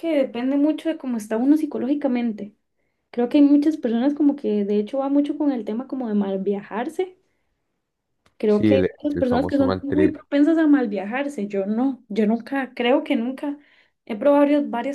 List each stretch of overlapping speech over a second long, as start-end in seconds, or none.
8.5-10.2